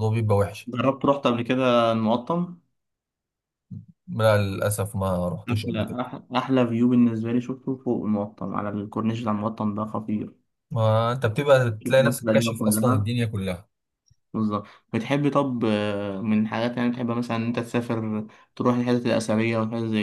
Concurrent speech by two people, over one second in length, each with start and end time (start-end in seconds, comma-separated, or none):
11.8-13.1